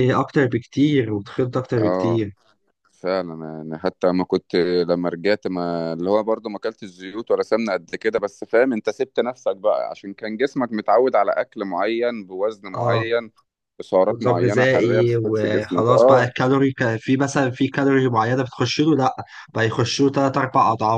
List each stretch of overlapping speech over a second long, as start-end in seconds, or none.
14.1-16.3